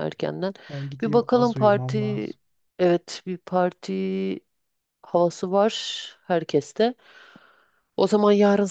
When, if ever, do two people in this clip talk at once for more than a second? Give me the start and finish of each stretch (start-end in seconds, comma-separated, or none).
1.0-2.3